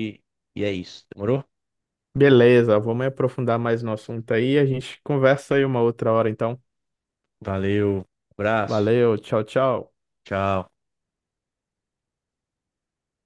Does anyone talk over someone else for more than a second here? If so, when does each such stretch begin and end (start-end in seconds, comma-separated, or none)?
none